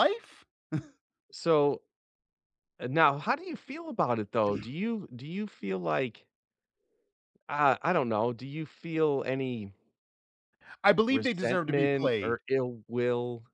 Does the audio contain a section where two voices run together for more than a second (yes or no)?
yes